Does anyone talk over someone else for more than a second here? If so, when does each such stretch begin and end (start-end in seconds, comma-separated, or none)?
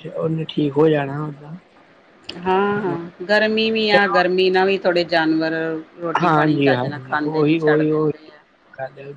6.2-8.1